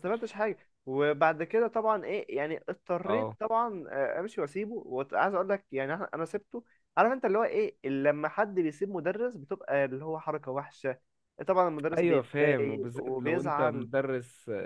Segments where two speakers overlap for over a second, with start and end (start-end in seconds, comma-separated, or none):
12.0-13.9